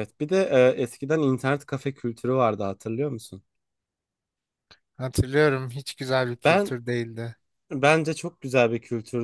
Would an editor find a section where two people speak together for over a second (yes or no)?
no